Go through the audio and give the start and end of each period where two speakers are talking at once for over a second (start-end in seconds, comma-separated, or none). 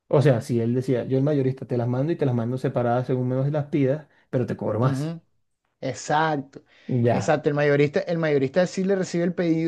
none